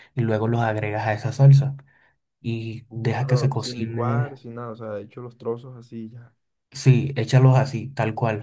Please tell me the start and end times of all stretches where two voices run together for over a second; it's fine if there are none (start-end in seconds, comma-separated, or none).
2.9-4.4